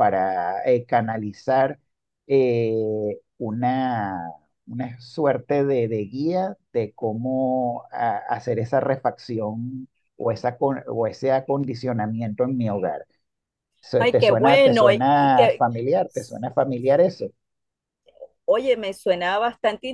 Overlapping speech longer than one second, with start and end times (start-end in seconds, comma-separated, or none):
14.0-15.6